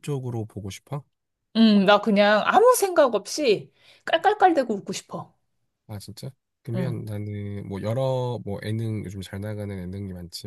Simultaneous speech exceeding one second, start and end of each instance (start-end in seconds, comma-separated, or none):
none